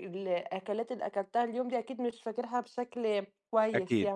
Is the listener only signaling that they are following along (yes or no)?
no